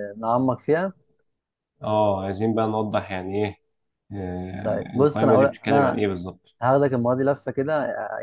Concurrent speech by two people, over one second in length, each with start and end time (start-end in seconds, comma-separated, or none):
4.6-6.0